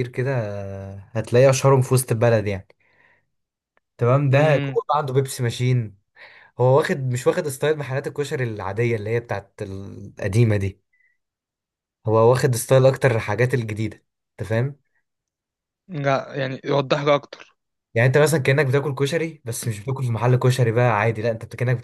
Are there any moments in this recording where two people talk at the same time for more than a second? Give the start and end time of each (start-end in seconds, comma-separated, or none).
none